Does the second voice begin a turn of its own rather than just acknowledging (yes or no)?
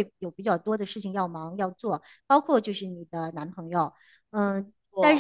no